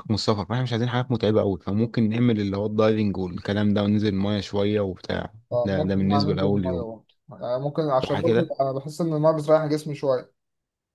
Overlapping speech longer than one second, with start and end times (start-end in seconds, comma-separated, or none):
5.5-6.9